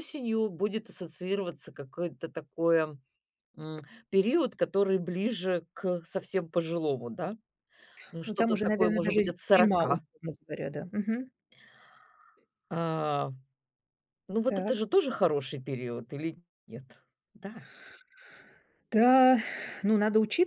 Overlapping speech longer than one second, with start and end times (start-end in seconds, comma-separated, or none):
8.2-10.0